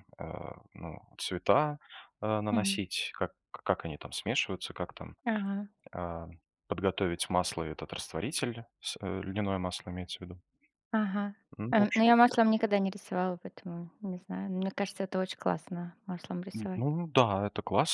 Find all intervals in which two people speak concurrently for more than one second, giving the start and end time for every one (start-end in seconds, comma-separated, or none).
none